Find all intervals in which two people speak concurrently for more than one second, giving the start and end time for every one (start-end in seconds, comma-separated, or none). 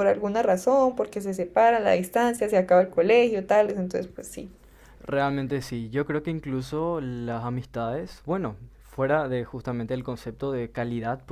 none